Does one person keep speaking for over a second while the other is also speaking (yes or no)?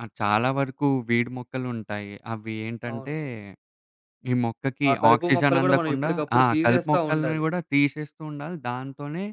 yes